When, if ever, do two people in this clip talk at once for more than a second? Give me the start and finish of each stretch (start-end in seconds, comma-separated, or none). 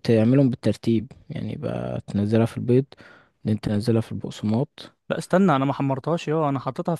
none